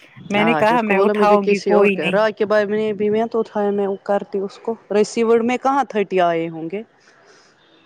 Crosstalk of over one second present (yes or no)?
no